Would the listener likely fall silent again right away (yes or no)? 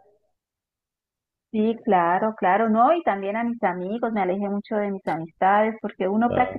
yes